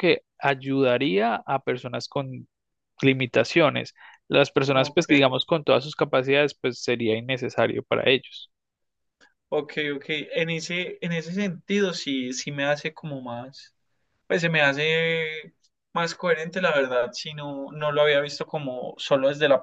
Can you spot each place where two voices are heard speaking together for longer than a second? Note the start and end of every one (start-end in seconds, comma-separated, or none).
none